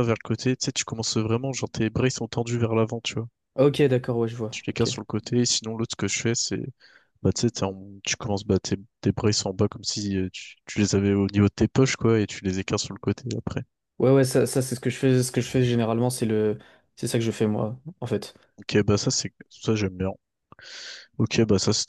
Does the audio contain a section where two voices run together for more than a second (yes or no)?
no